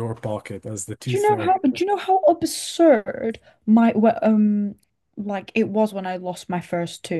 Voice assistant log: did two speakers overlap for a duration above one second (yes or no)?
no